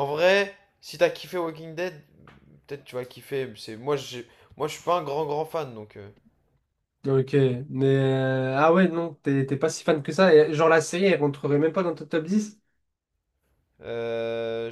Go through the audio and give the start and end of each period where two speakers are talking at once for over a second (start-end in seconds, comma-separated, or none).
none